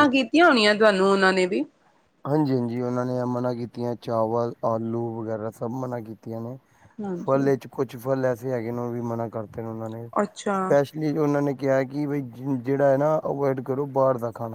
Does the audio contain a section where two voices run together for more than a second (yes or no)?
no